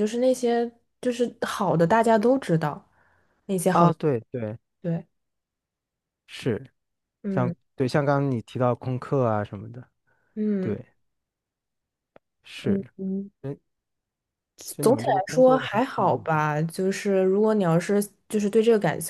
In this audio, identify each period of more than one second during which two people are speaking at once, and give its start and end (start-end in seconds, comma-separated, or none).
14.8-16.3